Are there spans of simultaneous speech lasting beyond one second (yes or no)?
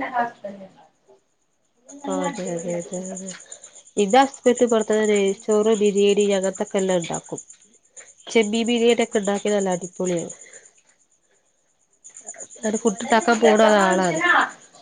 yes